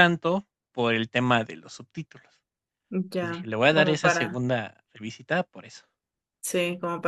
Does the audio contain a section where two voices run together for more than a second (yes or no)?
yes